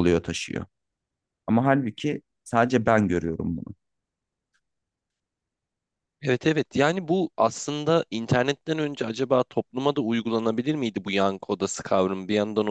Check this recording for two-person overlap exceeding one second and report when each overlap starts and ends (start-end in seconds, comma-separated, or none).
none